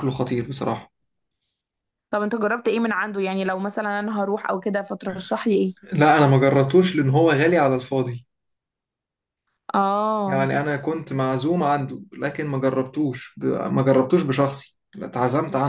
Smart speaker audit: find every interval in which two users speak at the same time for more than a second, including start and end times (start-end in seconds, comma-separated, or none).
none